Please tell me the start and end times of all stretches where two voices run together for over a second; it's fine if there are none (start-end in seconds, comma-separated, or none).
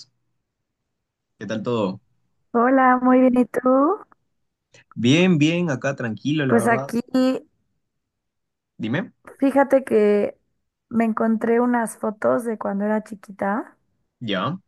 none